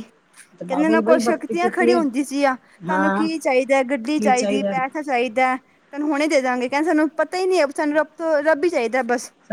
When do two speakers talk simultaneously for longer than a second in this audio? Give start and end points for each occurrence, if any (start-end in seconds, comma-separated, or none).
0.7-2.0